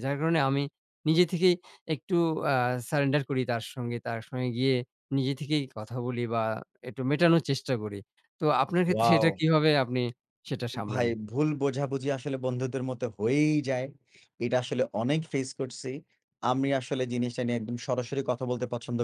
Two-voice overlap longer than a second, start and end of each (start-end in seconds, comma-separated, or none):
none